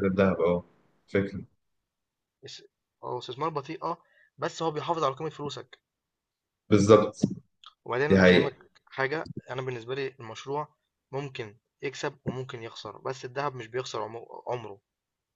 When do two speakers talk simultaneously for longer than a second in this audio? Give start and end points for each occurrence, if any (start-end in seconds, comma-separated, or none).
none